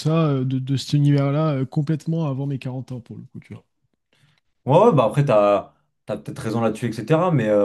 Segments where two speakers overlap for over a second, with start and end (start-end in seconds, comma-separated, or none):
none